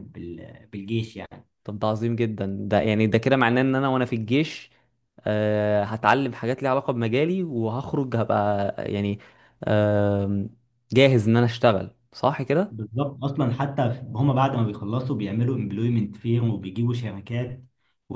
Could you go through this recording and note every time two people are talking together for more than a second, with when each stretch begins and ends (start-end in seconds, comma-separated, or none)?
none